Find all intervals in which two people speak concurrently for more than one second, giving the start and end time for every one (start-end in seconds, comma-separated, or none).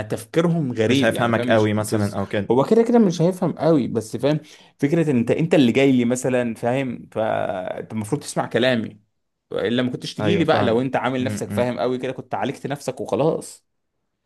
0.9-2.5, 10.2-11.7